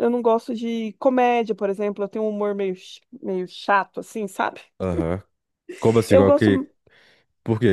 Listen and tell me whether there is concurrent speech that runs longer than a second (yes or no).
no